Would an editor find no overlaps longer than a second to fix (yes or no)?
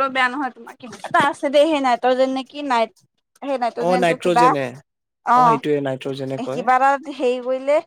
yes